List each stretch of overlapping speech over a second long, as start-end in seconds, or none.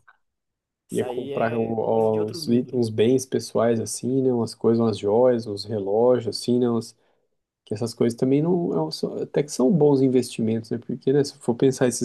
0.9-2.8